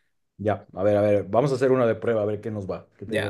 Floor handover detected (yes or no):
yes